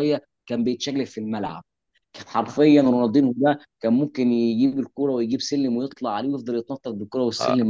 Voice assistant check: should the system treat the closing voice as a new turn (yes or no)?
yes